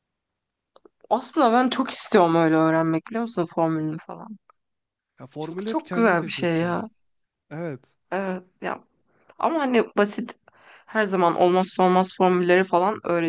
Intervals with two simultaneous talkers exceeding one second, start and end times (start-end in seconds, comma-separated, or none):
5.4-6.8